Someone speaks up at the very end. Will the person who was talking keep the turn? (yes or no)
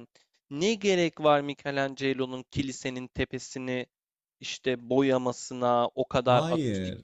yes